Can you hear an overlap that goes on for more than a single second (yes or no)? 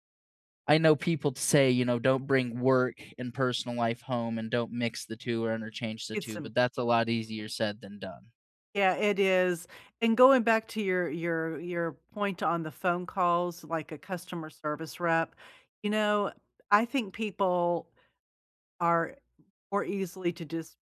no